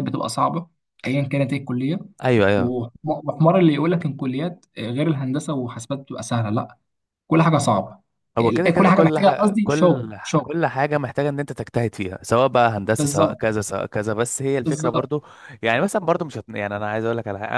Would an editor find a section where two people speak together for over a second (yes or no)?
yes